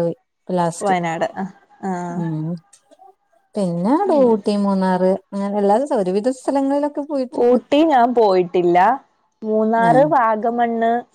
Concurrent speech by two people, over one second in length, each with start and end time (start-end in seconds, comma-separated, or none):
none